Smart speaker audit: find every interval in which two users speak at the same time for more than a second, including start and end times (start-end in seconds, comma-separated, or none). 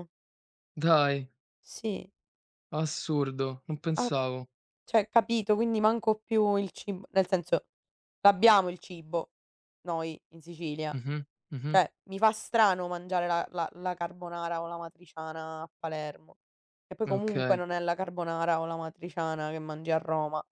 none